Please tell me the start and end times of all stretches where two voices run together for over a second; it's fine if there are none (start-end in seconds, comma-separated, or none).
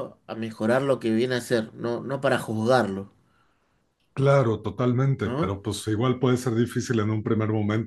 none